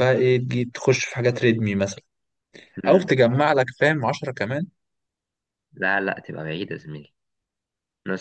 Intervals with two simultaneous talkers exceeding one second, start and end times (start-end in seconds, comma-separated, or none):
none